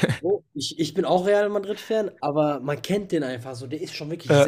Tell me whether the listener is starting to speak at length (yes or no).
no